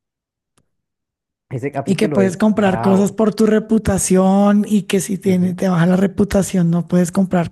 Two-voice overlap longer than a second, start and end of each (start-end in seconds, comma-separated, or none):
1.8-3.2